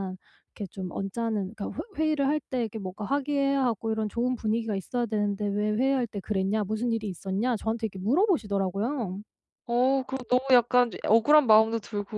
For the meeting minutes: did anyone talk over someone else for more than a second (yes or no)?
no